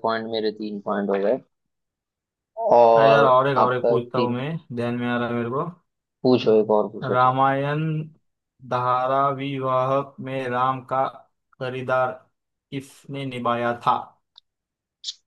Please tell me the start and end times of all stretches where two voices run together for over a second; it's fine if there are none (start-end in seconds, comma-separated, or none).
3.0-4.4